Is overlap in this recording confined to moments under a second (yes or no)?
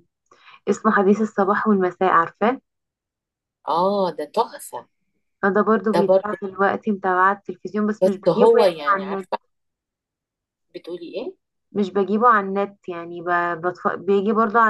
no